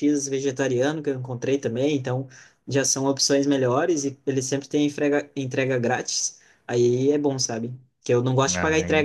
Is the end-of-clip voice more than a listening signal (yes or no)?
no